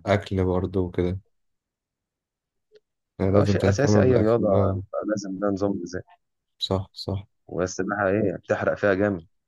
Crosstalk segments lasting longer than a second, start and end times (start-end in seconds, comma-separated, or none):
3.3-4.8